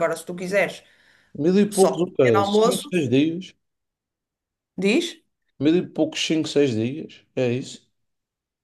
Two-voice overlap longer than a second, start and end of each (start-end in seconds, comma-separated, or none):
1.7-2.9